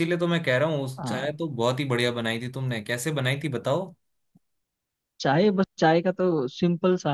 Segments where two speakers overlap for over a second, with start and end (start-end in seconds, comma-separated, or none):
none